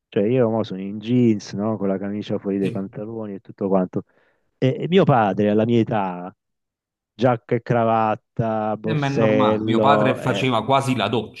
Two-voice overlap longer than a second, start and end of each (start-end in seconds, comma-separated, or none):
8.8-10.4